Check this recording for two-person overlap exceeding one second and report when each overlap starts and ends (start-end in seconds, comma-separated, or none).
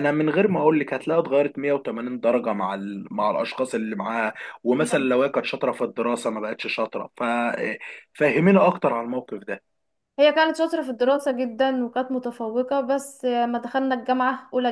none